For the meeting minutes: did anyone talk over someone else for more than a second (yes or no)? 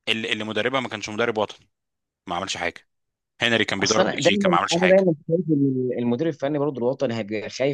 yes